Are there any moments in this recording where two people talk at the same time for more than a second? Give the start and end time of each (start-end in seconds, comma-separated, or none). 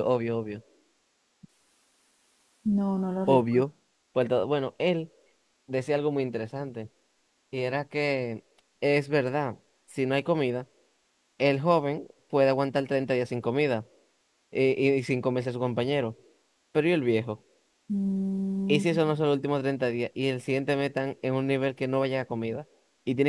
none